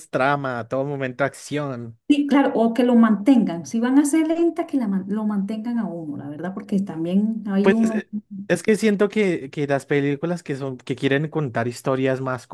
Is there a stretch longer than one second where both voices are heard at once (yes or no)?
no